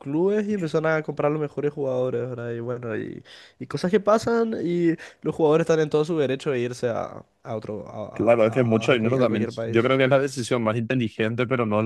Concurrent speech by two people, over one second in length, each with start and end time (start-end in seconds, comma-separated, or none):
8.1-9.9